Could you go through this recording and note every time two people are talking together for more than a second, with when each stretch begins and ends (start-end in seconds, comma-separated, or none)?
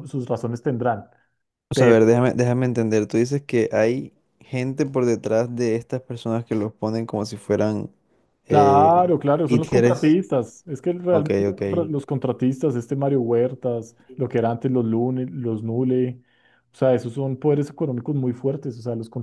8.5-10.2